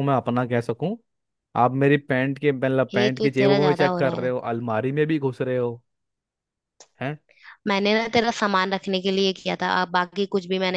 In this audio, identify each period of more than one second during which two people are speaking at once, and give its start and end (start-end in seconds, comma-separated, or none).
2.9-4.3